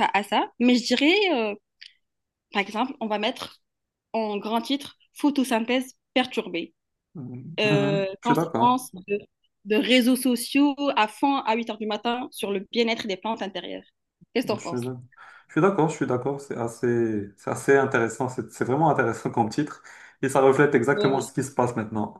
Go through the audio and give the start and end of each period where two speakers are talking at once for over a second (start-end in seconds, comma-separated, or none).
7.6-8.8